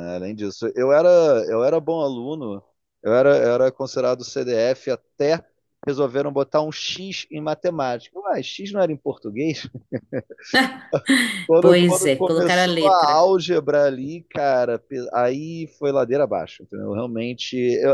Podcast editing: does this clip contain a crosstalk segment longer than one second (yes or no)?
yes